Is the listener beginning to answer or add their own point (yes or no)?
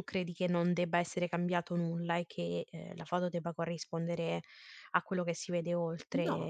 yes